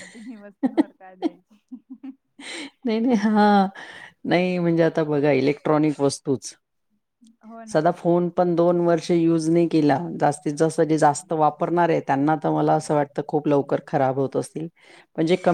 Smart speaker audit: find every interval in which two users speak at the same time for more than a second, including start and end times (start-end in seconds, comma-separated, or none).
none